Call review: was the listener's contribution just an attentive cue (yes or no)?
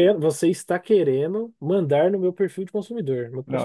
no